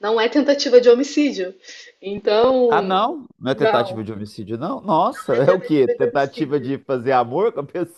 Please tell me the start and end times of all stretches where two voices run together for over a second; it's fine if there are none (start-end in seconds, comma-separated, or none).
5.3-6.7